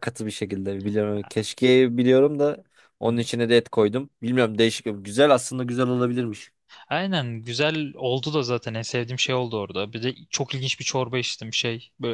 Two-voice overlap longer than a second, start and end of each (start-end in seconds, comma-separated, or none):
none